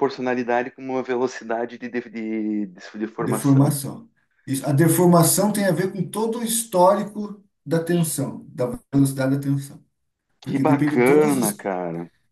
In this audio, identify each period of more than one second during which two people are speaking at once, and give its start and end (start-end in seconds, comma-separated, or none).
10.4-11.7